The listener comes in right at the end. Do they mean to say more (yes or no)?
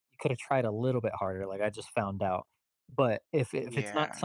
no